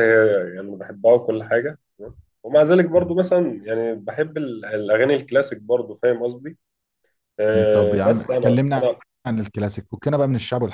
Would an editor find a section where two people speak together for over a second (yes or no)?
yes